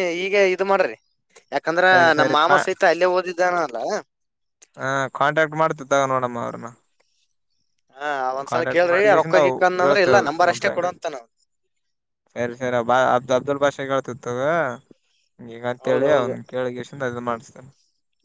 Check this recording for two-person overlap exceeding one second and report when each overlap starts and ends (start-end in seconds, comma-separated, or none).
8.5-10.8